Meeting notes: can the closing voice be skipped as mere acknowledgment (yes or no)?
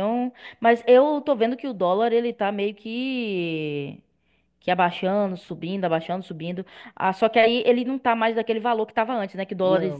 yes